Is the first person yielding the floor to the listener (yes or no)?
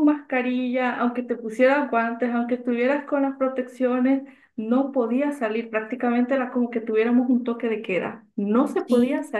no